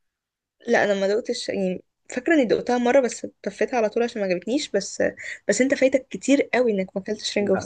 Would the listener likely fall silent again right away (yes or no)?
no